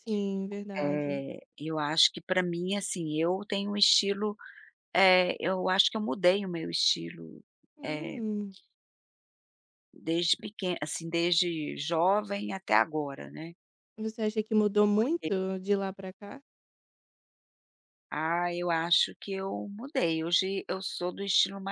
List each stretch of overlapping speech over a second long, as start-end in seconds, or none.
none